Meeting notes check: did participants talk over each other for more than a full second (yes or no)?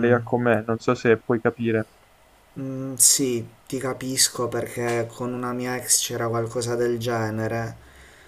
no